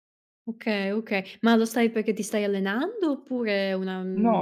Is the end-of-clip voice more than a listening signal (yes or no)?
yes